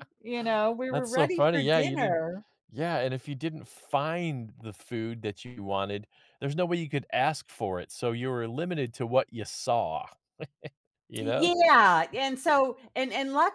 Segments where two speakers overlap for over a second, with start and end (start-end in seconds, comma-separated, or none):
0.9-2.2